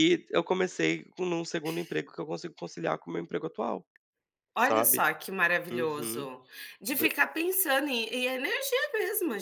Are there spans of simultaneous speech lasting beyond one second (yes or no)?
no